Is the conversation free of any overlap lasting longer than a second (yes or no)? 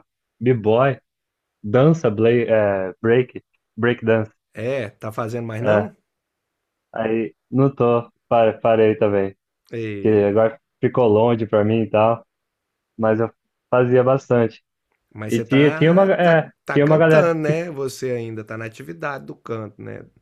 no